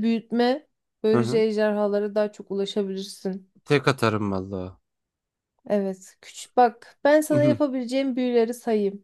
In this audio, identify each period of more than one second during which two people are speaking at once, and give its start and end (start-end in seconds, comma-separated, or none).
none